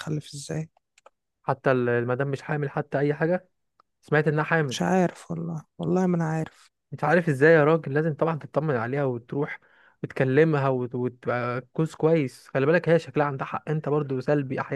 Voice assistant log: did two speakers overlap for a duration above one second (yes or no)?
no